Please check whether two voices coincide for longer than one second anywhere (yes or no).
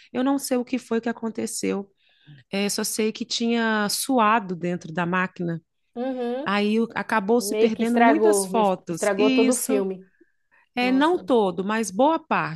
yes